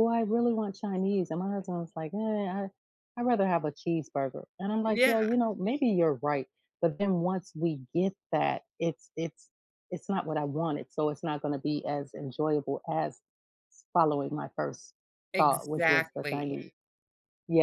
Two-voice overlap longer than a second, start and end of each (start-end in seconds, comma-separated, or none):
15.4-16.6